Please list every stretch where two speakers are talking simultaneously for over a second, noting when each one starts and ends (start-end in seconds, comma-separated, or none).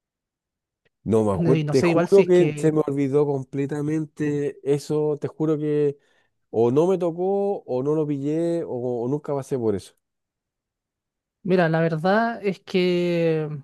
1.4-2.8